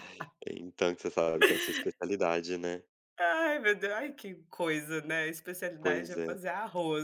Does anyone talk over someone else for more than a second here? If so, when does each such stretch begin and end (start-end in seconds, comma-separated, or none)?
none